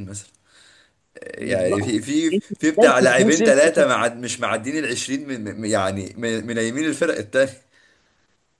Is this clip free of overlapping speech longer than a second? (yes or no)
no